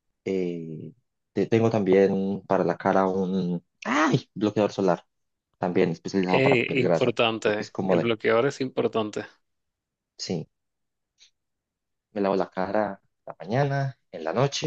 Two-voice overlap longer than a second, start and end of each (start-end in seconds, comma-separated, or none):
6.3-8.1